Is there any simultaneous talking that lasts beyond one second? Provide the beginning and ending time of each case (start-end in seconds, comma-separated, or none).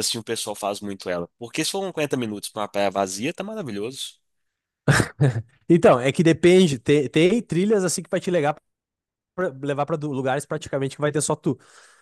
none